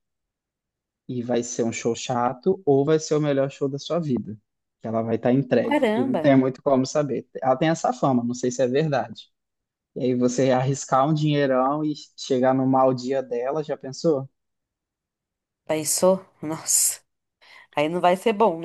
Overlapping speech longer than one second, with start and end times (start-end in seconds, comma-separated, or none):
none